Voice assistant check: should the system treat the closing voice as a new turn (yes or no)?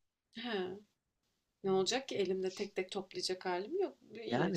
yes